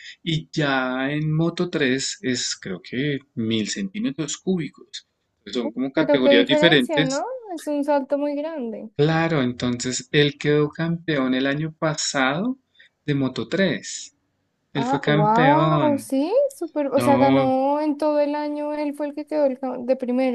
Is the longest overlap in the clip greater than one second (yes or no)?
yes